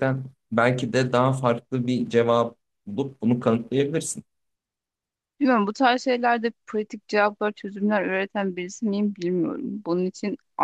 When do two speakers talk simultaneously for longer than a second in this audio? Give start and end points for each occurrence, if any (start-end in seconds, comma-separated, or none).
none